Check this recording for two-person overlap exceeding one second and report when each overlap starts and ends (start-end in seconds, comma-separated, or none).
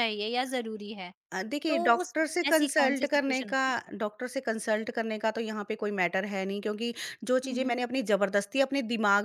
1.7-3.6